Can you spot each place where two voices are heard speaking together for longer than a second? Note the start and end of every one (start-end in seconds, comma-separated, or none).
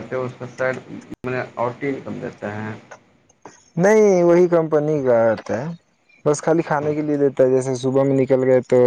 none